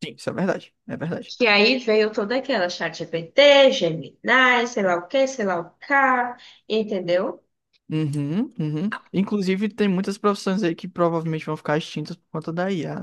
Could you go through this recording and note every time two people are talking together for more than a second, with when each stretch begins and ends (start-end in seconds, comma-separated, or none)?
none